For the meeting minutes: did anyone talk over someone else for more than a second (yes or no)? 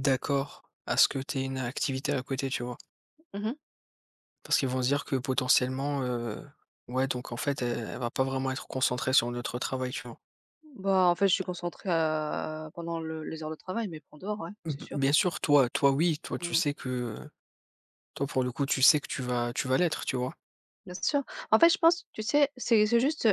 no